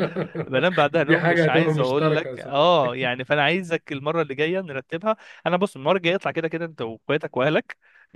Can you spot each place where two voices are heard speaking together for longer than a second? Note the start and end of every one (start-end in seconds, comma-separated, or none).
1.0-2.9